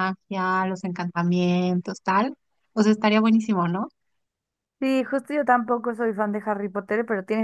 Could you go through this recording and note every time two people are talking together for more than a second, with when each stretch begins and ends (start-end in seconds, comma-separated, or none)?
none